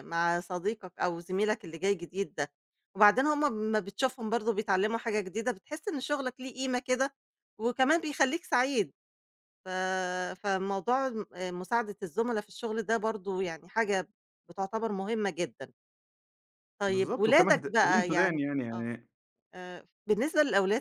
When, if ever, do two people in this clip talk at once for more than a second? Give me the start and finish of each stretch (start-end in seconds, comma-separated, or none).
16.9-18.9